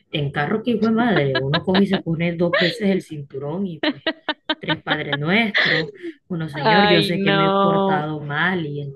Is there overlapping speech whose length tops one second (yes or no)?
yes